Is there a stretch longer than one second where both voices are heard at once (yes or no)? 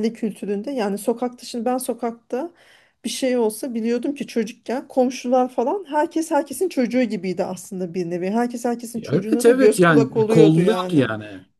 yes